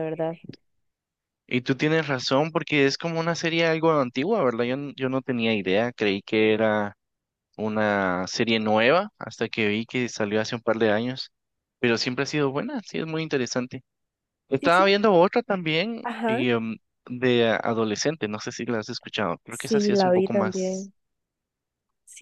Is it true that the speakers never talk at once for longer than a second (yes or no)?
no